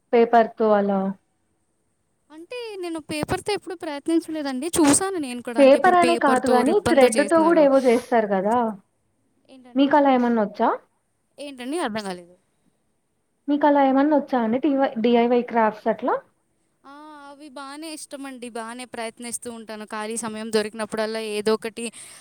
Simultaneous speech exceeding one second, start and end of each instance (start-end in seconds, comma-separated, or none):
5.6-7.6